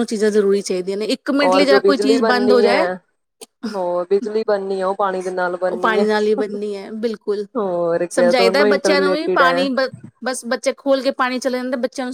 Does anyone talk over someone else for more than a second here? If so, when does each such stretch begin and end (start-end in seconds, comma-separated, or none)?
8.1-9.7